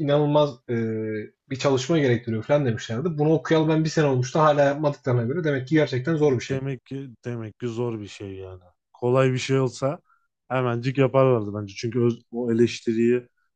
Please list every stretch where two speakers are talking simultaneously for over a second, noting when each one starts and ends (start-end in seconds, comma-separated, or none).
none